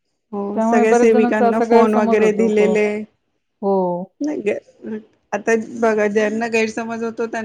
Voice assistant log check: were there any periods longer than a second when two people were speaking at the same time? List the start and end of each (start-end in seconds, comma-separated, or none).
0.5-2.7